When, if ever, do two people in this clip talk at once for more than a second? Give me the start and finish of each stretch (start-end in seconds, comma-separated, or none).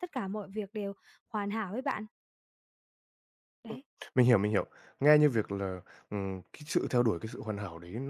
none